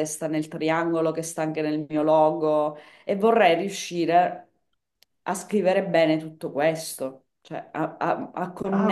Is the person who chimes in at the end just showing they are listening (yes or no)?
no